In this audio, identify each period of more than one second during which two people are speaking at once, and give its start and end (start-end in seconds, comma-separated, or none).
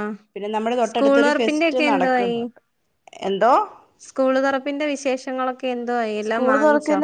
0.9-2.4